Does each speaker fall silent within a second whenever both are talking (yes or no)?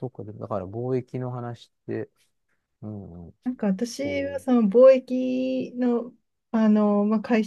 yes